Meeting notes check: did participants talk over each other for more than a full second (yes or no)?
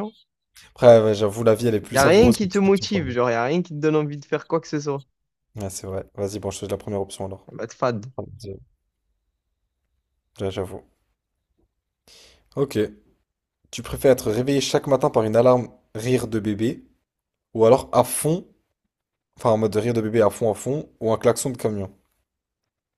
yes